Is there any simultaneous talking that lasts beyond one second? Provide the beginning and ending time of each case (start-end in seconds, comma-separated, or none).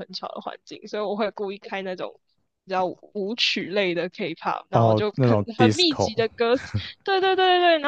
4.7-6.2